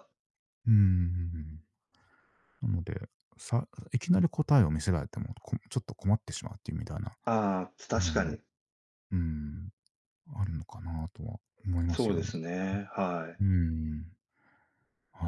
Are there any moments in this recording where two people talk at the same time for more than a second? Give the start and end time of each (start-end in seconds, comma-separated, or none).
none